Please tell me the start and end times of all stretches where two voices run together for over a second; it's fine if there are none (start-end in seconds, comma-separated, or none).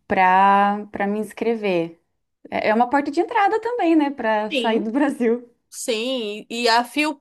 none